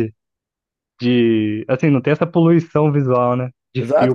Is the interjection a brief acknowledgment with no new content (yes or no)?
no